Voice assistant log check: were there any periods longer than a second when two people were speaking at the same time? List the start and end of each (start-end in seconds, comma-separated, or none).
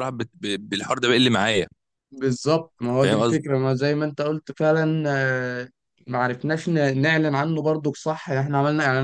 none